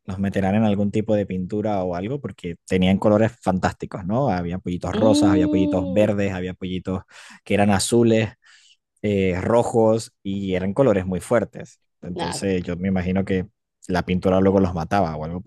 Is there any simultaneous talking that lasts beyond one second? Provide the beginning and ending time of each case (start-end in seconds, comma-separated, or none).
4.9-6.2